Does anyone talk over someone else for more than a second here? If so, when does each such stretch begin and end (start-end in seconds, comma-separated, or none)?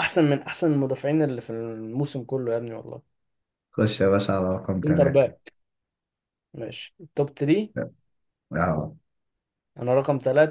none